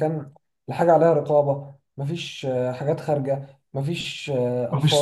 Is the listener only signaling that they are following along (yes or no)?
yes